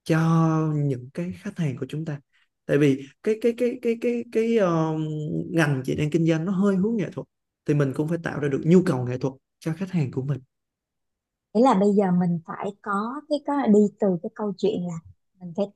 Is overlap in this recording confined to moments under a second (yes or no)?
yes